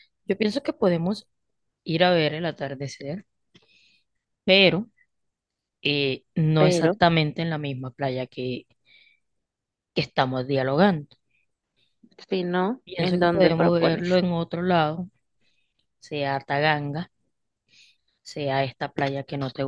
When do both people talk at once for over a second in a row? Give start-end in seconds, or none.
12.8-14.2